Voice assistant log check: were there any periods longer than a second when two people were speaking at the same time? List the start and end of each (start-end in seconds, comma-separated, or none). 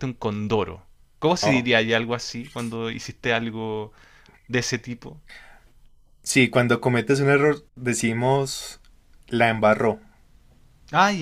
none